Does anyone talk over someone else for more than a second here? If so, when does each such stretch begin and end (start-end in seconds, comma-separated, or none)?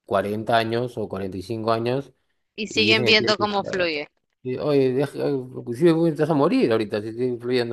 2.7-3.9